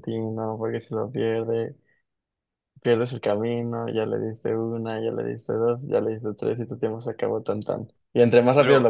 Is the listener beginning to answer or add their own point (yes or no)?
no